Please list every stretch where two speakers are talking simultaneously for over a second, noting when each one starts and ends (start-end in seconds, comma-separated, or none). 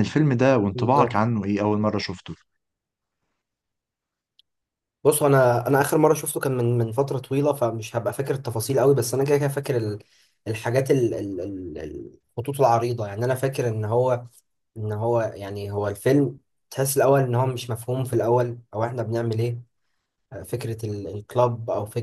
none